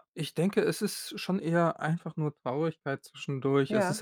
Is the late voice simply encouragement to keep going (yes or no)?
yes